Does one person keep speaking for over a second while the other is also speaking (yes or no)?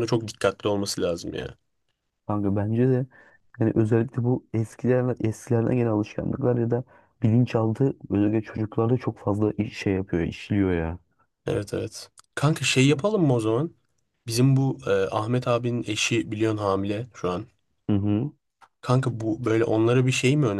no